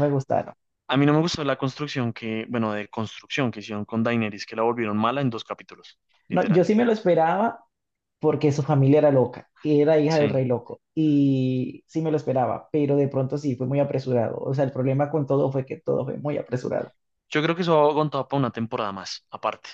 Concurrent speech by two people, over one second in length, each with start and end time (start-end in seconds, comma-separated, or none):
none